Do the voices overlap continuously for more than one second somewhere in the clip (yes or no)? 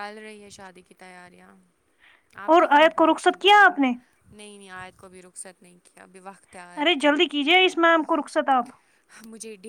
yes